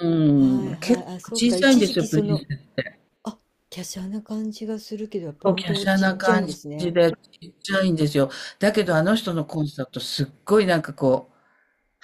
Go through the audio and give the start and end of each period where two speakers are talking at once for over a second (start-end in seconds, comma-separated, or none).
0.7-2.4, 5.4-7.0